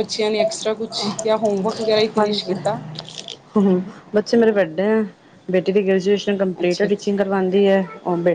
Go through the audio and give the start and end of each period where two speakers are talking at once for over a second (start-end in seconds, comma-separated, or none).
none